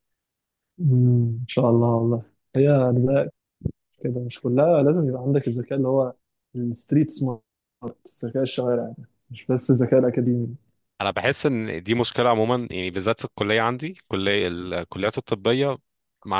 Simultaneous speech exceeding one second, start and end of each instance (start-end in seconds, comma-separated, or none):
none